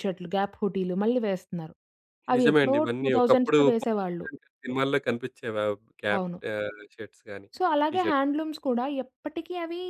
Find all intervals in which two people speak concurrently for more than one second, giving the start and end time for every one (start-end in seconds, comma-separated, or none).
2.4-4.3